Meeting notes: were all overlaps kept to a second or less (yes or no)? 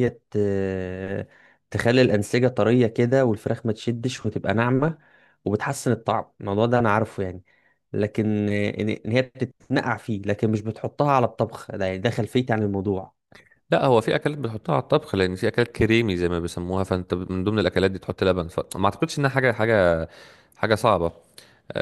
yes